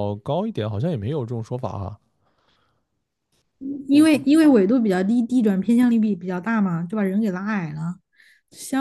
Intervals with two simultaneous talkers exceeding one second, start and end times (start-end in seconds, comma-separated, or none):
none